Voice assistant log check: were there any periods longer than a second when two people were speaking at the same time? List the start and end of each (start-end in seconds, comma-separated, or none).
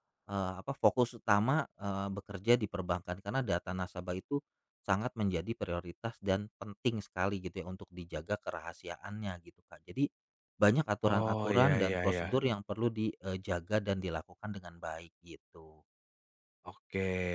11.1-12.4